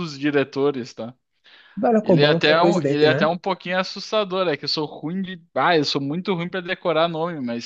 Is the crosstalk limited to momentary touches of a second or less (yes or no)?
no